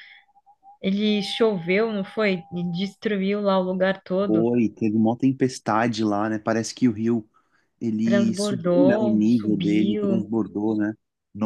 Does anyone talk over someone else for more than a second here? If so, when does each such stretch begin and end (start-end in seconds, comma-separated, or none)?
8.0-10.3